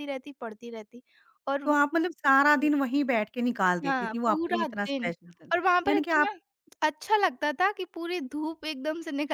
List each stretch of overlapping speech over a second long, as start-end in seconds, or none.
3.8-5.1